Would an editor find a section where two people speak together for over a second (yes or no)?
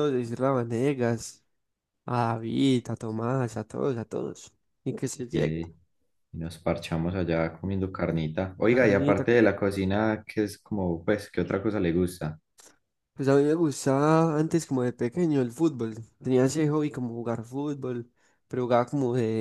no